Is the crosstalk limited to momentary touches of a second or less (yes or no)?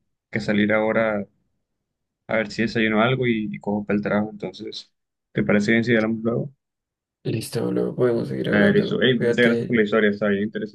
no